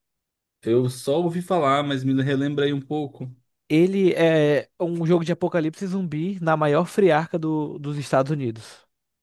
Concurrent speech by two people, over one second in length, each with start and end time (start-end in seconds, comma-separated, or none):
none